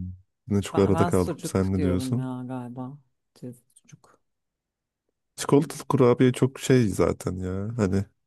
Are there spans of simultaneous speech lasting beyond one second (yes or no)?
yes